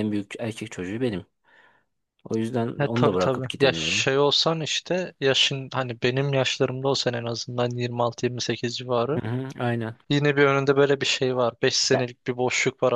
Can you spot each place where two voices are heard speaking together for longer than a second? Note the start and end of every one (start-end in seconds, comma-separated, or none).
2.8-4.1